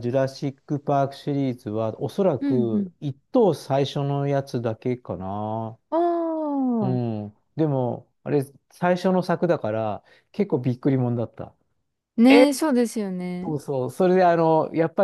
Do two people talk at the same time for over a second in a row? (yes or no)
no